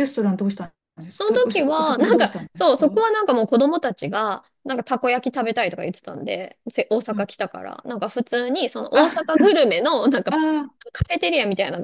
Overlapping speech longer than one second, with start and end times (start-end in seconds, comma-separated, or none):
1.1-3.0